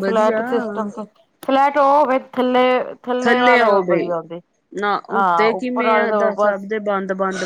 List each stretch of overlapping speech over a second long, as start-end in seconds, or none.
5.1-6.7